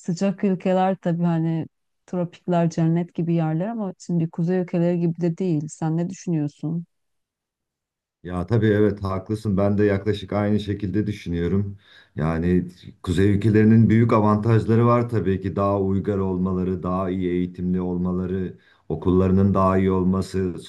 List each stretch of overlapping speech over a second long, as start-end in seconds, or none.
none